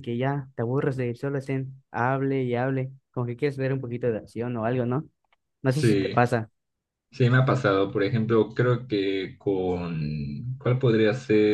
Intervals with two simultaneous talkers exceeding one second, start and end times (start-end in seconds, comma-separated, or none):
none